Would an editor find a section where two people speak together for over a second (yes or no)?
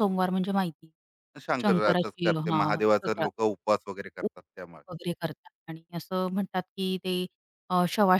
yes